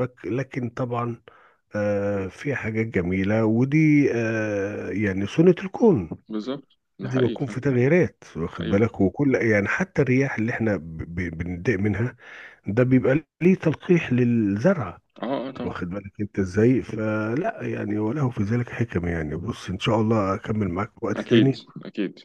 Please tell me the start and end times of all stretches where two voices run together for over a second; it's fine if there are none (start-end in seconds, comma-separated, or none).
none